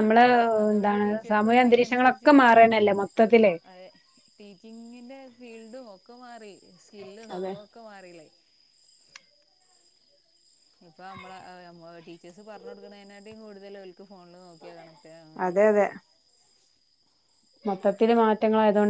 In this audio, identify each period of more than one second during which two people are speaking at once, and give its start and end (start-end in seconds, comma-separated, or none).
0.7-2.3